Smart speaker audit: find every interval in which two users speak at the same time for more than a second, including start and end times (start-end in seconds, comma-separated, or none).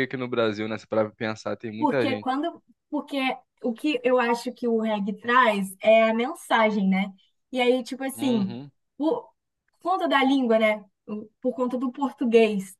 none